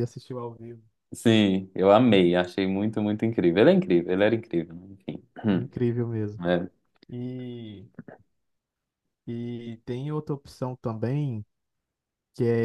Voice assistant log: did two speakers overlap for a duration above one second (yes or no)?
no